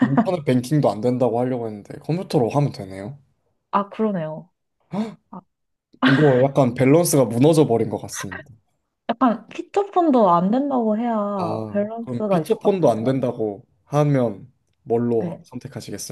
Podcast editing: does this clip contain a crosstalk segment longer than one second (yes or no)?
yes